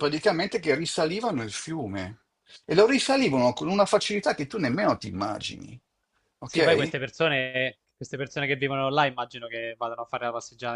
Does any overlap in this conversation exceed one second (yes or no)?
no